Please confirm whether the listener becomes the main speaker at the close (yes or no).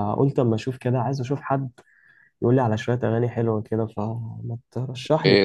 yes